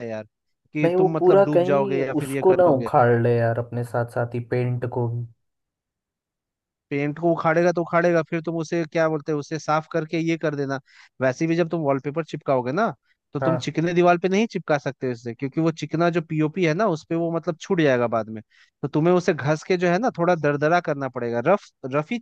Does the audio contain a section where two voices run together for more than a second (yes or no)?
yes